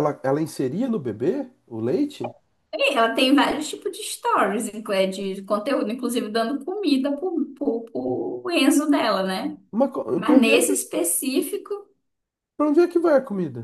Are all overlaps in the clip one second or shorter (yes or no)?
yes